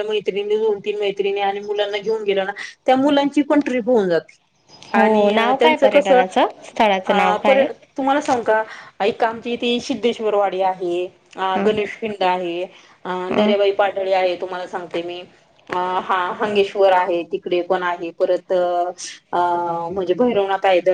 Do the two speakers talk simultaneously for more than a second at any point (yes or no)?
yes